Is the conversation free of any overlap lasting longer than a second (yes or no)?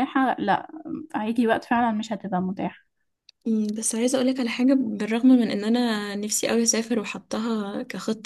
yes